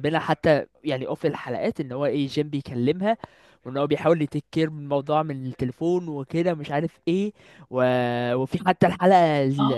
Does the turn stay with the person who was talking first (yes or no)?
yes